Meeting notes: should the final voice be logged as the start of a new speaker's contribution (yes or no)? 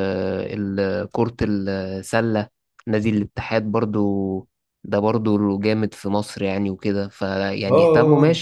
no